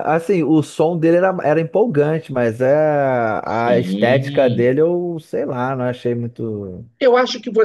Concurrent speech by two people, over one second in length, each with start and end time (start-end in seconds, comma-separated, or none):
3.5-4.8